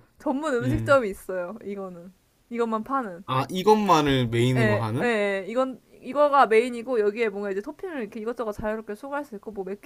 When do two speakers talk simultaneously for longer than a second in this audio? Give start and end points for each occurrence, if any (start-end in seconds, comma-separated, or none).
none